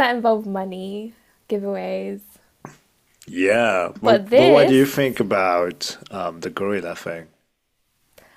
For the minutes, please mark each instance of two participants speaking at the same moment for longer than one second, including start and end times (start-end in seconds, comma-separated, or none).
4.0-5.2